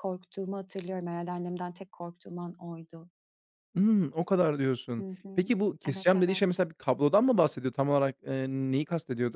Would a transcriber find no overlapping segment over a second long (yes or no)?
no